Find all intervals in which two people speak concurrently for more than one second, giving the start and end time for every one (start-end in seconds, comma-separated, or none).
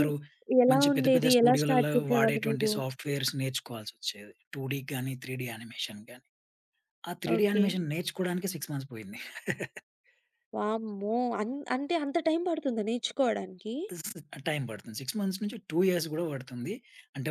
0.7-2.7